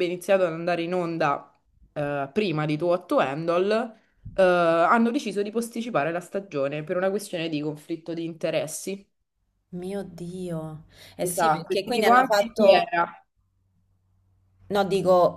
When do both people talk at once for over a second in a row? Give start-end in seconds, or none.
11.2-12.9